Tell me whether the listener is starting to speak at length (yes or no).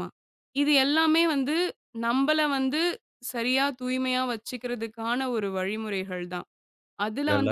no